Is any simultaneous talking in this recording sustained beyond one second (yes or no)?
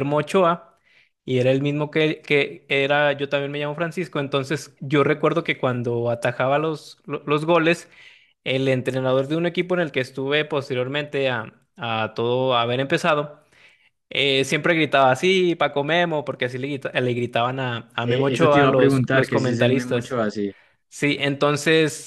yes